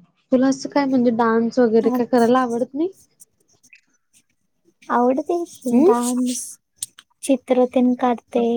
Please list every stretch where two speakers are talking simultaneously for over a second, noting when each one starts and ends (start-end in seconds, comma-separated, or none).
none